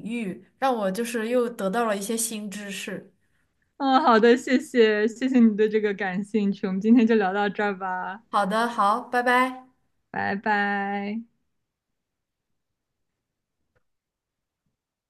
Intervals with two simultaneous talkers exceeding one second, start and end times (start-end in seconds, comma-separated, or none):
none